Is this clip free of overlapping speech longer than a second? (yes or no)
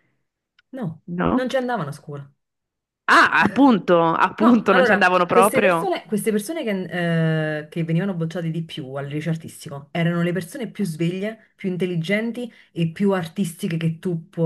no